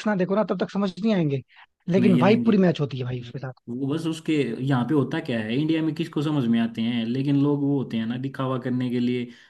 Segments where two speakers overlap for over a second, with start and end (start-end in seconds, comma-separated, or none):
none